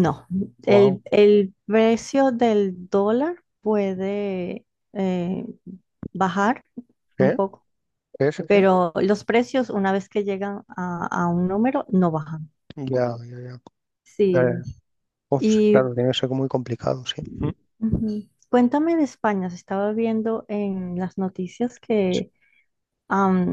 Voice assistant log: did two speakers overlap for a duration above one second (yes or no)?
no